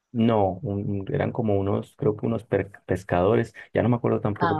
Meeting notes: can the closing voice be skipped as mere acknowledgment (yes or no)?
yes